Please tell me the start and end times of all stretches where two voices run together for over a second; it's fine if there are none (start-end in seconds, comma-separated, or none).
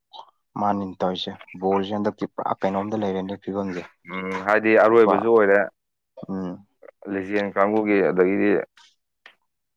none